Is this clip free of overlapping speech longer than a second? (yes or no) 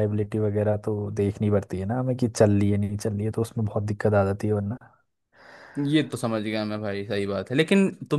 yes